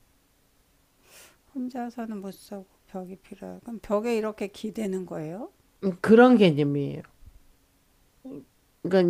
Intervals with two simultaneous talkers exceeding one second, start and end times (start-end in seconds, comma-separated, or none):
none